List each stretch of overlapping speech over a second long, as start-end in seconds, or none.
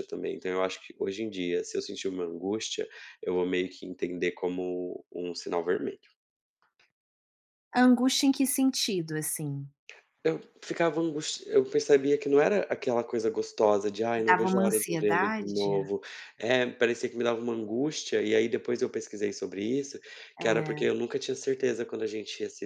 14.2-15.7